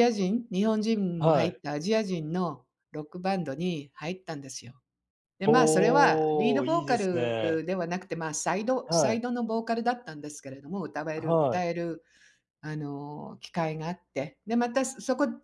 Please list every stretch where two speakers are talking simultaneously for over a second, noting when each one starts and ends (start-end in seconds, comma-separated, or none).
5.5-7.6